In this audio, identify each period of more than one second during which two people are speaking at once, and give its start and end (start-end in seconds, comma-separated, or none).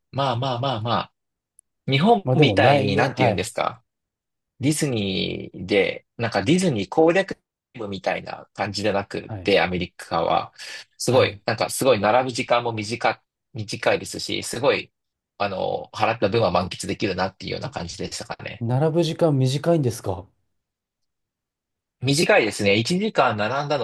2.2-3.5